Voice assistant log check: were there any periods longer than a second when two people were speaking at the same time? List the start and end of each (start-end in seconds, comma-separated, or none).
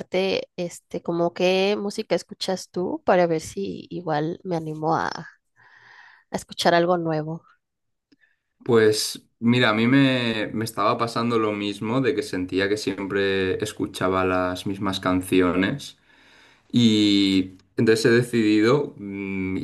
none